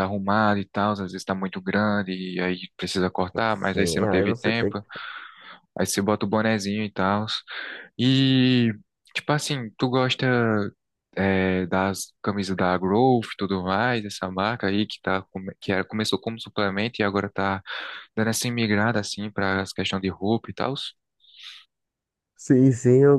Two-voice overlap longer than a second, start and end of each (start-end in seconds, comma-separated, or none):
3.5-4.8